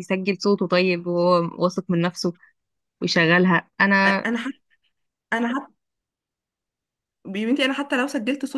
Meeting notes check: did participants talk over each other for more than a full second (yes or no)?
no